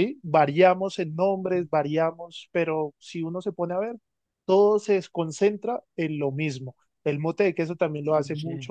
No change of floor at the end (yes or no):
yes